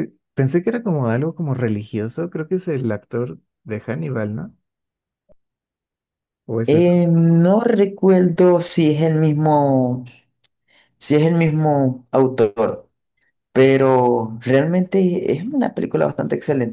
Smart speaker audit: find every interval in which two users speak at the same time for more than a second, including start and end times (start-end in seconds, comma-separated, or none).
none